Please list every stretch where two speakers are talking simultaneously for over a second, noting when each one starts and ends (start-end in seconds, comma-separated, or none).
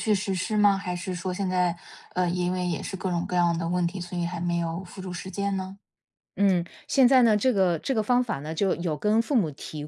none